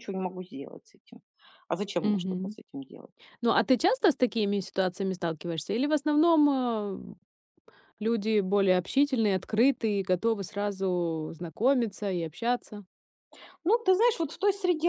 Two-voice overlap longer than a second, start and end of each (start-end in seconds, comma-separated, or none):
none